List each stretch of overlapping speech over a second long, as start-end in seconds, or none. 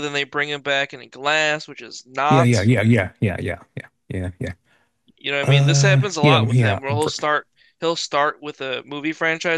5.4-7.1